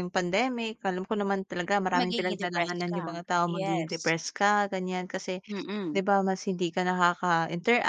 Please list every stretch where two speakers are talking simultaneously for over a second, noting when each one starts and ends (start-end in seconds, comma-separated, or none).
1.9-4.1